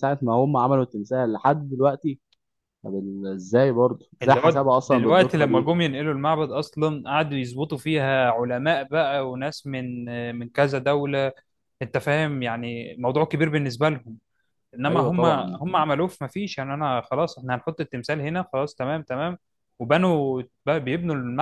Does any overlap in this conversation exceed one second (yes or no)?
yes